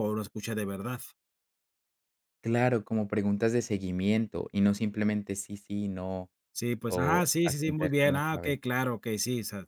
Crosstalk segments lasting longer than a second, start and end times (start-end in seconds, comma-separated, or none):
6.8-8.6